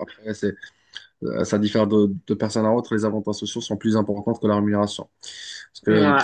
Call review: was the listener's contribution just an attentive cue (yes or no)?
yes